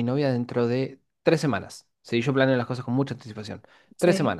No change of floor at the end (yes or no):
yes